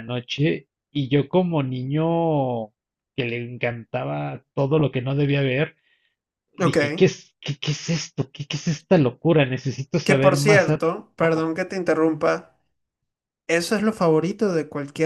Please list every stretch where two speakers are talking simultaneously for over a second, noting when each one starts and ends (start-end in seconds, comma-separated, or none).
10.1-11.5